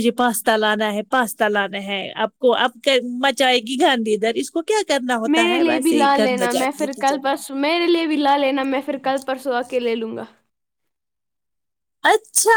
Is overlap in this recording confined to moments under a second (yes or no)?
no